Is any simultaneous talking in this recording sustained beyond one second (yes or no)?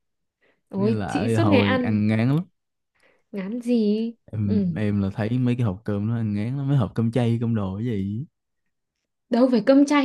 yes